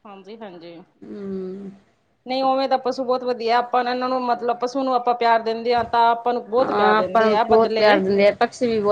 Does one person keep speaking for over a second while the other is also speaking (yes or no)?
yes